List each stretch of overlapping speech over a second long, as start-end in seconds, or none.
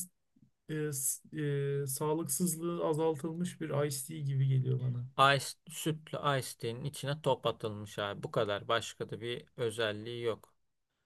none